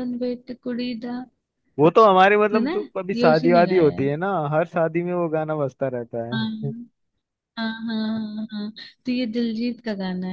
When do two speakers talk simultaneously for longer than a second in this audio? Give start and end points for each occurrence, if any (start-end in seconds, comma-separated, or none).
2.5-4.1